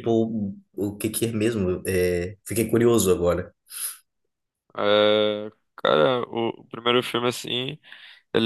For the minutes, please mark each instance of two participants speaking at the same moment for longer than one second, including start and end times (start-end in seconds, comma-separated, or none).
none